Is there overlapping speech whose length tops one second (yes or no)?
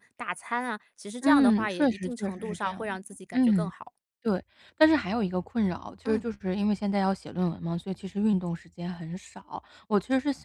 yes